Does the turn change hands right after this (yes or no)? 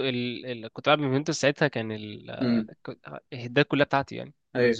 yes